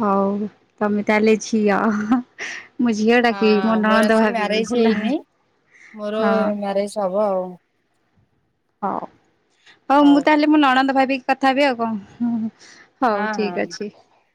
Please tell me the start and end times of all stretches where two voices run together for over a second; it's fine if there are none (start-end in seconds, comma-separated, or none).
3.3-5.1